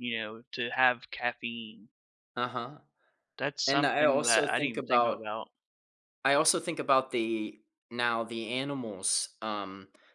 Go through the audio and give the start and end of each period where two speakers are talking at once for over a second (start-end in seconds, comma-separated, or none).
3.7-5.3